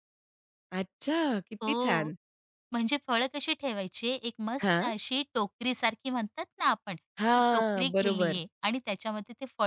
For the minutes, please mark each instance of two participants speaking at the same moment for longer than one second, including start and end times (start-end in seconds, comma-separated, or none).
7.2-8.4